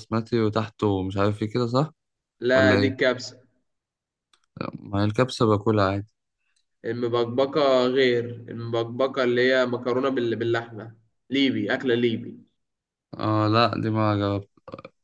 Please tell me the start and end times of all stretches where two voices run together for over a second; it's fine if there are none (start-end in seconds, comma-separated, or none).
none